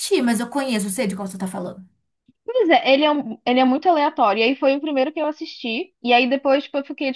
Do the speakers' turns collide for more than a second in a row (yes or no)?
no